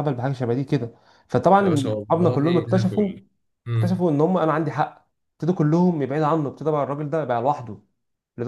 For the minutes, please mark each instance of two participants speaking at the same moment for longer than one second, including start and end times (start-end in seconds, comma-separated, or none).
1.6-3.1